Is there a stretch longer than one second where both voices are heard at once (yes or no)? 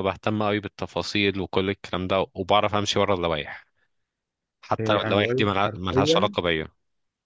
yes